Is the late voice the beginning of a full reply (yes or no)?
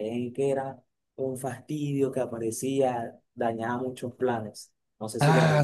yes